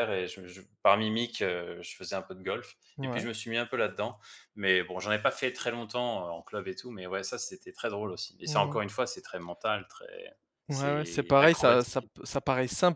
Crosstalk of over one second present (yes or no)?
yes